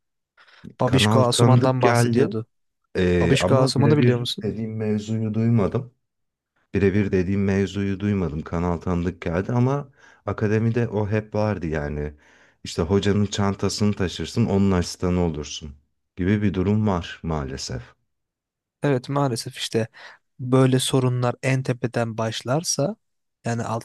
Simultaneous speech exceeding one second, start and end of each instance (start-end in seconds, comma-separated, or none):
0.8-2.4, 3.2-4.5